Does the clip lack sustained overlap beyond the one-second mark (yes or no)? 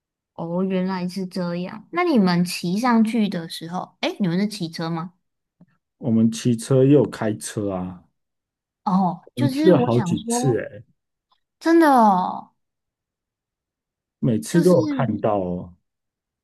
no